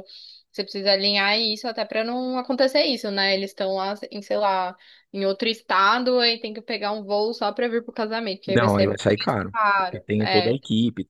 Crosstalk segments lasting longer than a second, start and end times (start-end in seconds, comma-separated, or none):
8.4-10.6